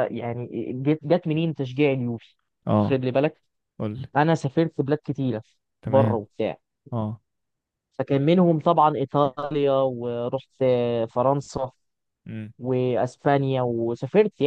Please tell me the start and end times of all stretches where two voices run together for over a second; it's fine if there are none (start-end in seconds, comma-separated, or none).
none